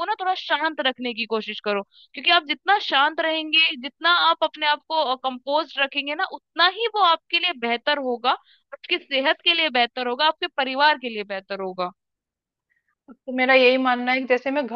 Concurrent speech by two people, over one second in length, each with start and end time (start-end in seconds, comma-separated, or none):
none